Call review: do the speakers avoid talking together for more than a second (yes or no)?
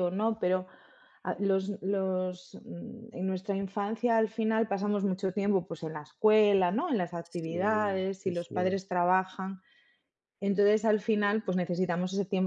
no